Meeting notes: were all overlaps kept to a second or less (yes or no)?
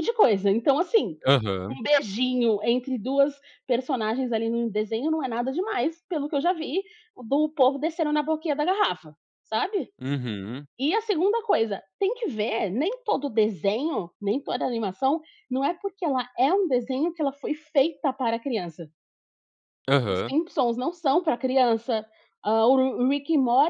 yes